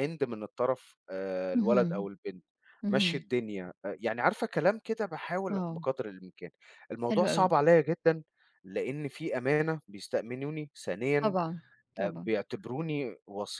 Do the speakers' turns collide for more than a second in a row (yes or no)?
no